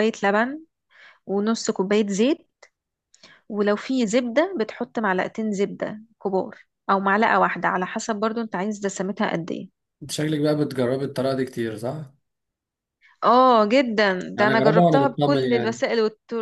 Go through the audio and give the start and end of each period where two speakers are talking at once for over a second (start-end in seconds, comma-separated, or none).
14.4-15.8